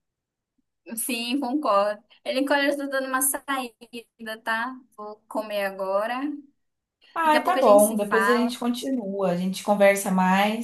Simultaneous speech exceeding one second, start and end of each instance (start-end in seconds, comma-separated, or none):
7.2-8.5